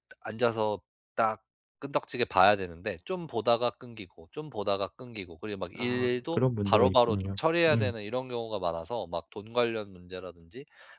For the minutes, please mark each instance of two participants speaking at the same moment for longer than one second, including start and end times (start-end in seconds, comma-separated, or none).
5.8-7.9